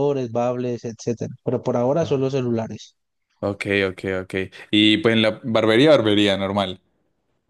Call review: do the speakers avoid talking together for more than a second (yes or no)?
yes